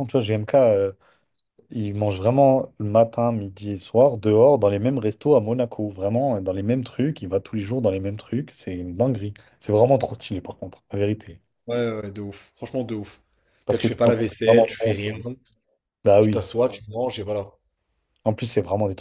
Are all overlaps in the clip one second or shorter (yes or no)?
no